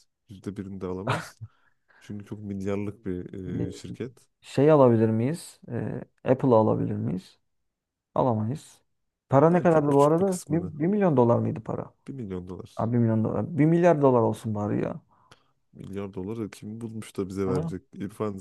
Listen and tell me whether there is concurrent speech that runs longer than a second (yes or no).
yes